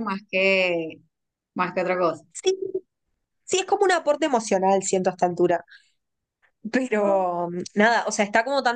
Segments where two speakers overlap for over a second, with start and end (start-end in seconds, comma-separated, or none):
none